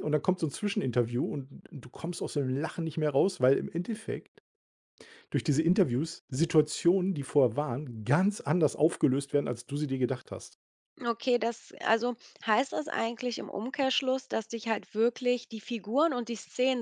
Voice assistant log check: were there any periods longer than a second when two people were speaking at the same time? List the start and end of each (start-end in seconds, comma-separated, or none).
none